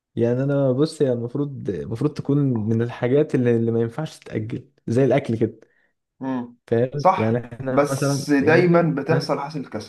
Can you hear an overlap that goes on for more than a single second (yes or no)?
yes